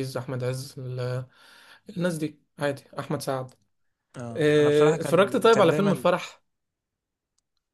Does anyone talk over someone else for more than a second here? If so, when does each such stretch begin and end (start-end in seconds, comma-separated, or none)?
4.3-6.1